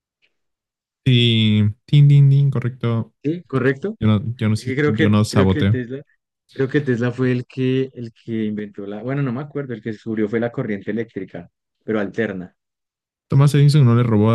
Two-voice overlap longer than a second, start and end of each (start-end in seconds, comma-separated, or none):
4.6-5.8